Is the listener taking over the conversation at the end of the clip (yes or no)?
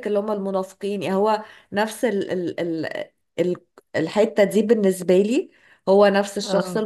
no